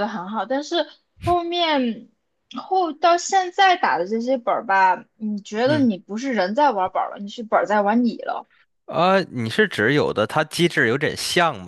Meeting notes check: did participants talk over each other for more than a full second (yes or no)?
no